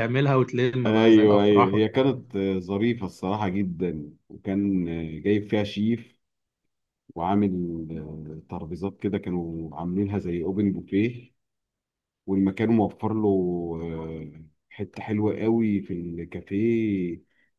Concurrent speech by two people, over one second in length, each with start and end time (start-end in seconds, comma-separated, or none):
0.9-2.1